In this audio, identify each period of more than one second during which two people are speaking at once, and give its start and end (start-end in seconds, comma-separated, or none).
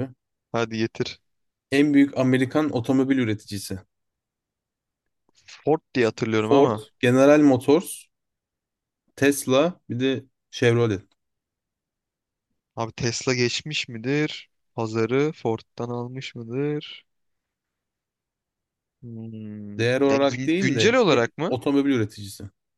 19.8-21.6